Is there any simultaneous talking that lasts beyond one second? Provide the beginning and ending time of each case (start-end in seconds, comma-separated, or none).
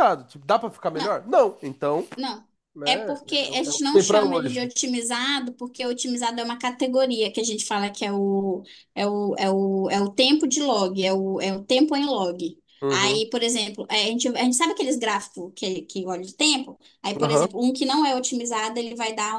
2.8-4.7